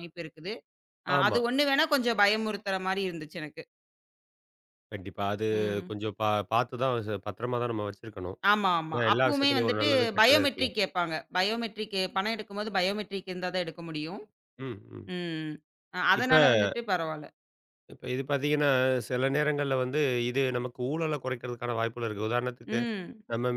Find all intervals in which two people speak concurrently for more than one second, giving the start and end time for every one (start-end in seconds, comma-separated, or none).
8.9-10.7